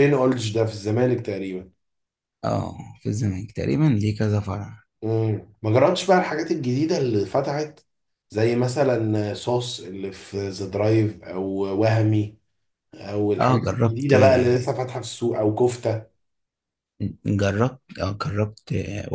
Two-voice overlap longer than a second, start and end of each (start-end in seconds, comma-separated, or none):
13.4-14.7